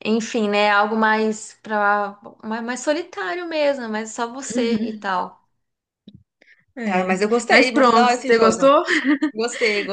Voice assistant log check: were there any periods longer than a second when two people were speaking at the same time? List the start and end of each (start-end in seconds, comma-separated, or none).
6.8-8.8